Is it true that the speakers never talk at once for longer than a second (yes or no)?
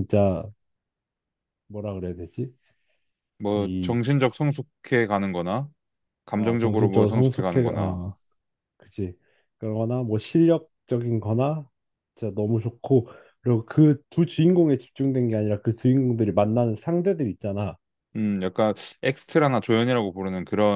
no